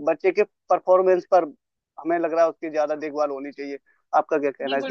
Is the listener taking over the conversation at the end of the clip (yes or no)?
yes